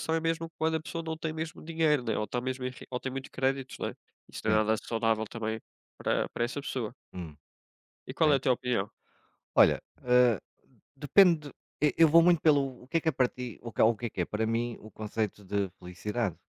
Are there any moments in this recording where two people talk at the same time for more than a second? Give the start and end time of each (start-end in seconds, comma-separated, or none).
none